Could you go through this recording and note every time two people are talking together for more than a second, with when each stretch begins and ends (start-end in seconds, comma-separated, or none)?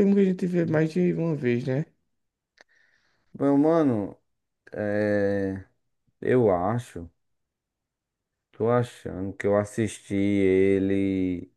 none